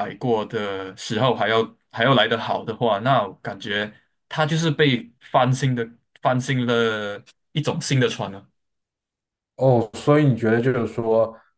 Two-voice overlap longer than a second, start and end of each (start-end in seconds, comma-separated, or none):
none